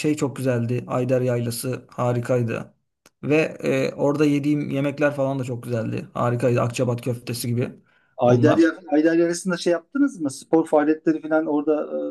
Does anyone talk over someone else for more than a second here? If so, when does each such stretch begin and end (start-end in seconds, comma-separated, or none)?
none